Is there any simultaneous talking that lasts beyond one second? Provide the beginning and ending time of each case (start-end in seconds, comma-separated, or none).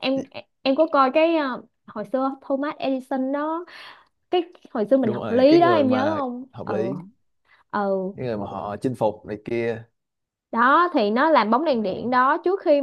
5.0-6.8